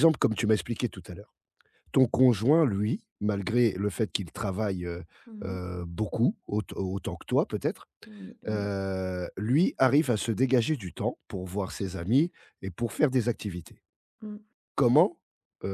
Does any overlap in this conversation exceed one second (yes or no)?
no